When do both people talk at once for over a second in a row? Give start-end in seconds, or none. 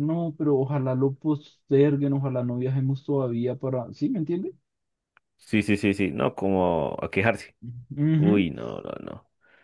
none